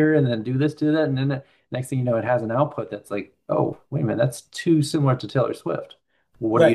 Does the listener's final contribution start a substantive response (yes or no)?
yes